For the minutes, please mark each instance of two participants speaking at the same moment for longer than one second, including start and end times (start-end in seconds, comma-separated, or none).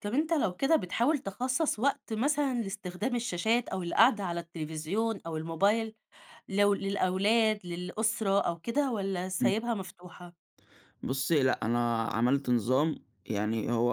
none